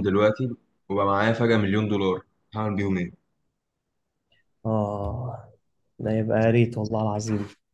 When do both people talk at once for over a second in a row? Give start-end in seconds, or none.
none